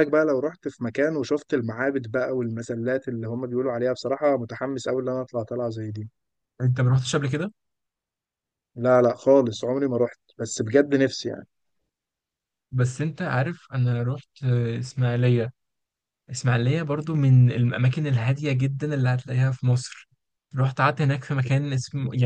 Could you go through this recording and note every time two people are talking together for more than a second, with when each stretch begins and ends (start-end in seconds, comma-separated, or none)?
none